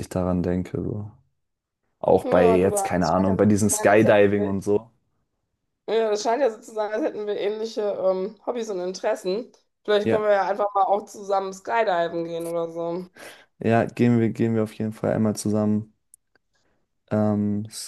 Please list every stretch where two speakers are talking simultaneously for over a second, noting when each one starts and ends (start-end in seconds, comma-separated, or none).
2.2-4.5